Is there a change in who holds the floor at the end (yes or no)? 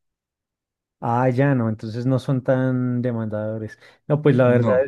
no